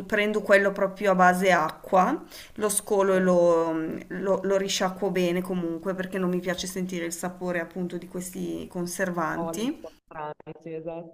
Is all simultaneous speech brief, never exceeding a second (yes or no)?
yes